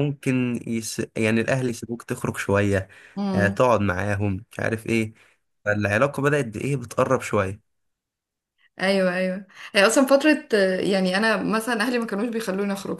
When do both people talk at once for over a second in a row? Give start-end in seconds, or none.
none